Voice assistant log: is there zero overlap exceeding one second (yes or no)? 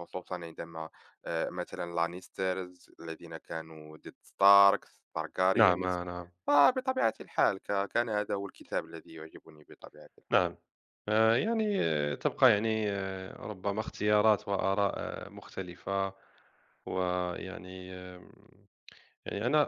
yes